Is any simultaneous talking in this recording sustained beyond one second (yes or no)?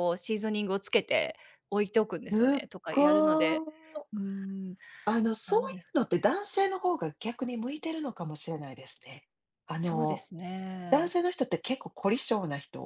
yes